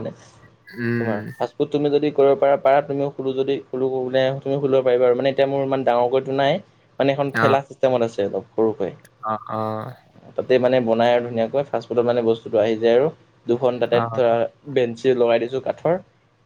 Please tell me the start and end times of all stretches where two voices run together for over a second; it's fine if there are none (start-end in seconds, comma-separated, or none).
none